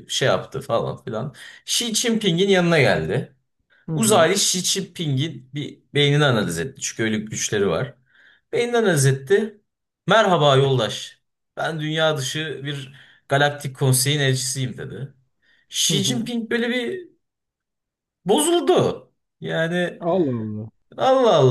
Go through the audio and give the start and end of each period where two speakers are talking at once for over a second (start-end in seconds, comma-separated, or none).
none